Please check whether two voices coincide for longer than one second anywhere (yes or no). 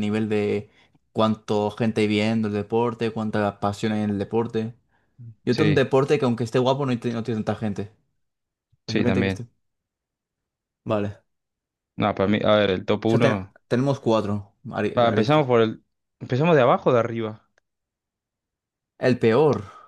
no